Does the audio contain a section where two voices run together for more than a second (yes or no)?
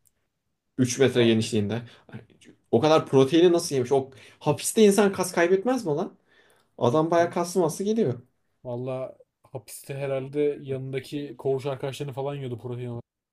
no